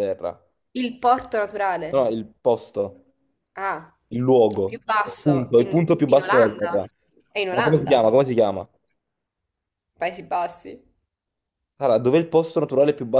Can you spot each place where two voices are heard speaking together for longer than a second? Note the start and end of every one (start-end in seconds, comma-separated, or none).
4.6-6.8